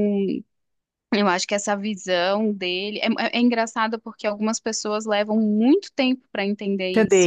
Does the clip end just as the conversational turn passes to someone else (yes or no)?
yes